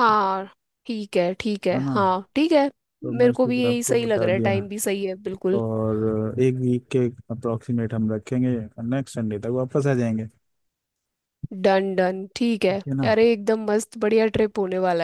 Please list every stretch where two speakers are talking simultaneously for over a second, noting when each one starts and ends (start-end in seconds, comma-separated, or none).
3.2-4.6